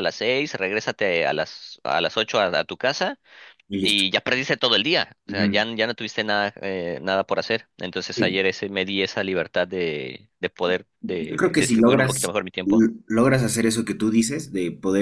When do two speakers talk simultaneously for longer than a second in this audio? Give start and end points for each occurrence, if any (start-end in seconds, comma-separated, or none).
11.0-12.9